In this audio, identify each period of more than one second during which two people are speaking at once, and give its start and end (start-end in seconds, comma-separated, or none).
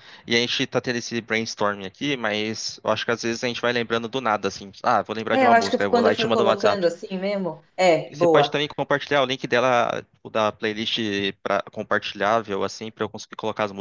5.3-6.9